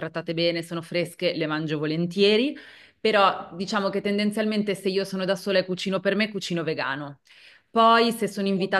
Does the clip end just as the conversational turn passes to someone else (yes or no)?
no